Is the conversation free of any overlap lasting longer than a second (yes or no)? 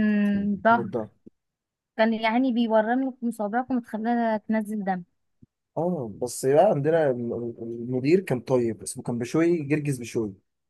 yes